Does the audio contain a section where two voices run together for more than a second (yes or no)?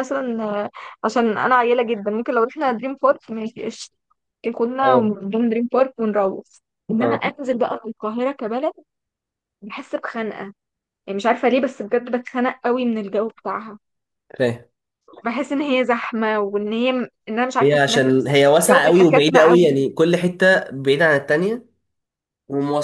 yes